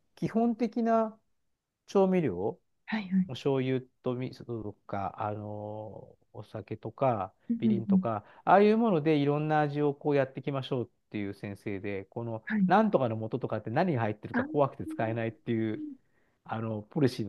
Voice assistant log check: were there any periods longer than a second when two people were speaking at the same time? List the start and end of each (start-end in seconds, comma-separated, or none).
none